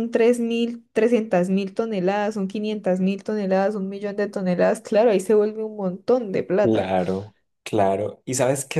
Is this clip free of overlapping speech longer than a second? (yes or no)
yes